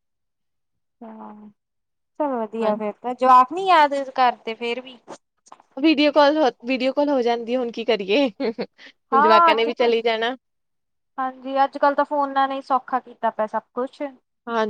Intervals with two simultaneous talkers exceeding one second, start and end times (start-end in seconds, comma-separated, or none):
none